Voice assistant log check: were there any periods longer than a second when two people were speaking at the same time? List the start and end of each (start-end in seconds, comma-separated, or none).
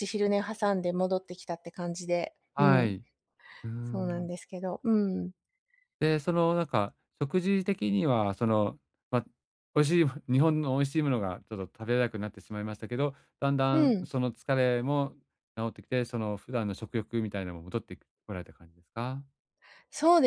none